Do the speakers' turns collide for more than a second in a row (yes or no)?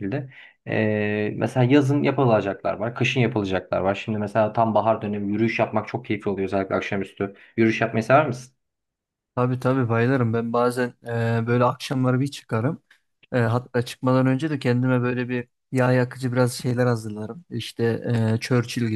no